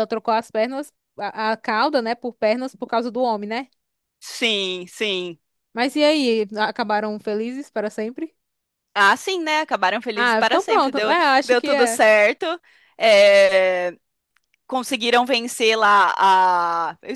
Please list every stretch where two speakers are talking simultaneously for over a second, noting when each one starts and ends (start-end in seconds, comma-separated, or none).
10.2-12.0